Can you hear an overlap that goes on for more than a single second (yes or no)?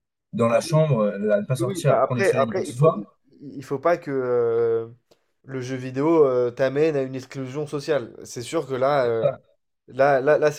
yes